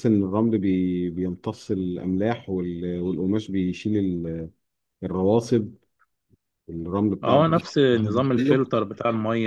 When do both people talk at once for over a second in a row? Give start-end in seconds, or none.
7.2-8.6